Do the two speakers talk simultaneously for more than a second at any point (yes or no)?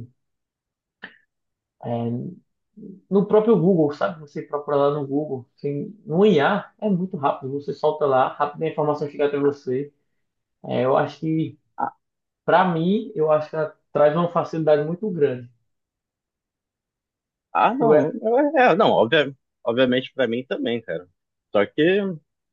no